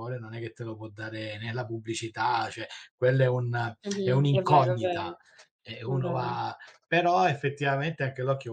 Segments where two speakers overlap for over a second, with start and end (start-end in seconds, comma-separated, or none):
3.8-5.2